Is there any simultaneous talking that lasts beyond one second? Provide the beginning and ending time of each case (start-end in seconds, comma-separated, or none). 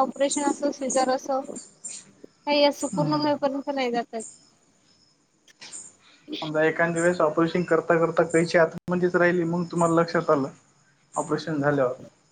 none